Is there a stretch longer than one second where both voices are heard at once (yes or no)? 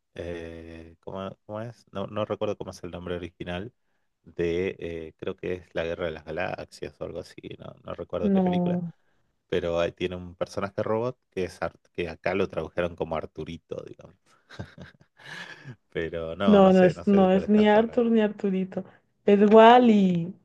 yes